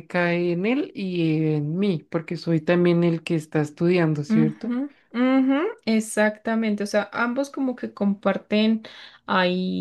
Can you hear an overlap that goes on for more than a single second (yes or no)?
no